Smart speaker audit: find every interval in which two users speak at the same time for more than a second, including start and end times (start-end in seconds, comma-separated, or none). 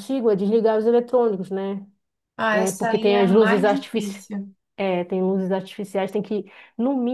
2.5-4.2